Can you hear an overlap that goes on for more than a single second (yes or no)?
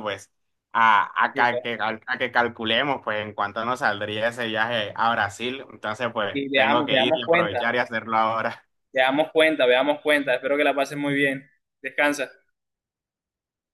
yes